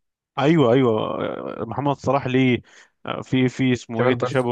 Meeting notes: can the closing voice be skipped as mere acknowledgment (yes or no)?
yes